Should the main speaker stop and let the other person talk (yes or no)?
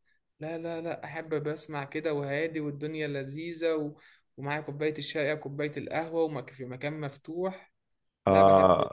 yes